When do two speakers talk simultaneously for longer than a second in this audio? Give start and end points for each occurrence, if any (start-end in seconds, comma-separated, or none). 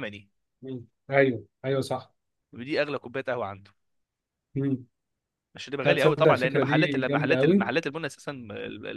5.8-7.7